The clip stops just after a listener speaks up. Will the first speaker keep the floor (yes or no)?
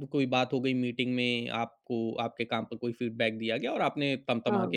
yes